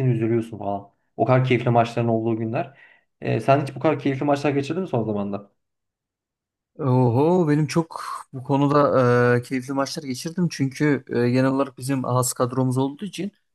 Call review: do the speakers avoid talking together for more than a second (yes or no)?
yes